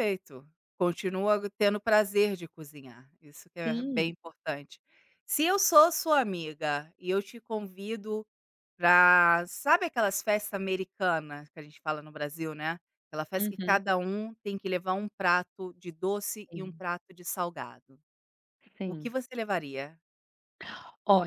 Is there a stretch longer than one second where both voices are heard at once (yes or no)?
no